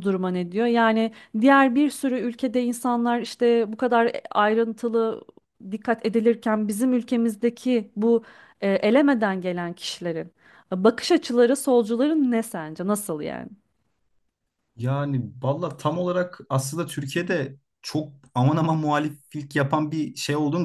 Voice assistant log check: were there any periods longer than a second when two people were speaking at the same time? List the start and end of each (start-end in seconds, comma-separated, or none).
none